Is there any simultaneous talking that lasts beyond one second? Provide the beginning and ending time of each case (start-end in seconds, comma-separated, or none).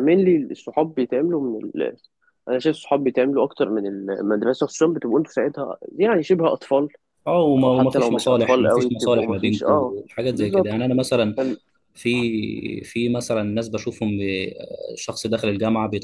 7.6-10.9